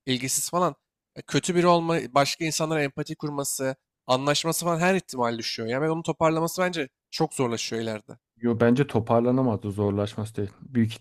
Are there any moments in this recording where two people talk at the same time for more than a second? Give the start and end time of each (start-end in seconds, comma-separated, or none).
none